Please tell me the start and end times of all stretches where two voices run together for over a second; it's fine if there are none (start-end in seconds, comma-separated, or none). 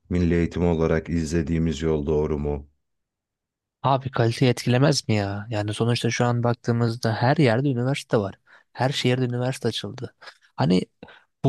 none